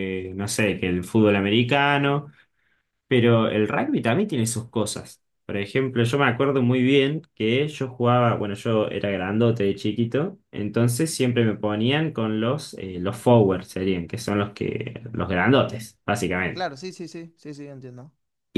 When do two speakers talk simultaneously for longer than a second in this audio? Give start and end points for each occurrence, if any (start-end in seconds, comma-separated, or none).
none